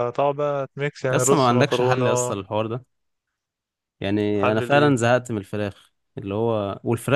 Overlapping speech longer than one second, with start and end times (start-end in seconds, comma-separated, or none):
1.1-2.3